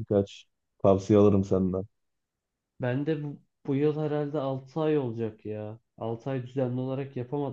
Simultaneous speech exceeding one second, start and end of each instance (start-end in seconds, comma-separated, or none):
none